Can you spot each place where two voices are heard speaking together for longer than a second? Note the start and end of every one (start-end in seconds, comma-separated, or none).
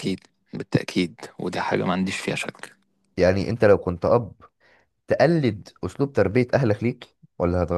none